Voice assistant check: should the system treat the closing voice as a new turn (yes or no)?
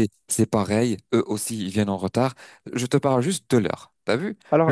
yes